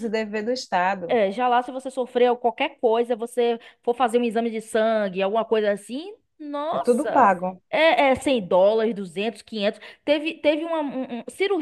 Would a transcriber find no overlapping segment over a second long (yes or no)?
yes